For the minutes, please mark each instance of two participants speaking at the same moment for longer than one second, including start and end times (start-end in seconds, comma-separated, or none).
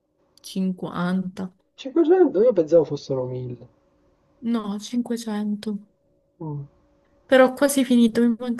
none